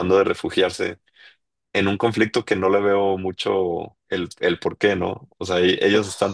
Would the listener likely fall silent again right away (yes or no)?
yes